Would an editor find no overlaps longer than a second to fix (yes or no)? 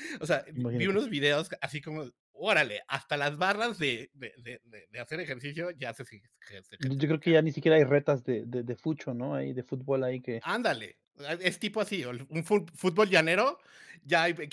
yes